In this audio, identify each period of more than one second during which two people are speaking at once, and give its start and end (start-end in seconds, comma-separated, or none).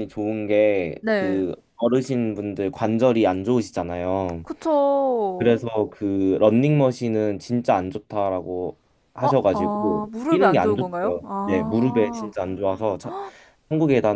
9.2-12.3